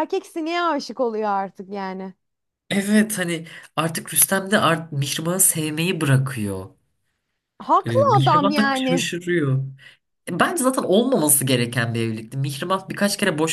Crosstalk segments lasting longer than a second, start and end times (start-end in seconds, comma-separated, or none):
7.8-9.1